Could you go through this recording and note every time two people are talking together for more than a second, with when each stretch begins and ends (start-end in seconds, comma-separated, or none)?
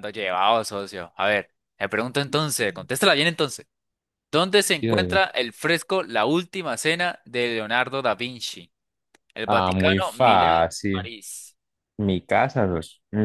9.5-11.1